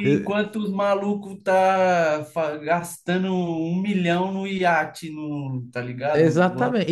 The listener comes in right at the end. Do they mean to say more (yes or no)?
yes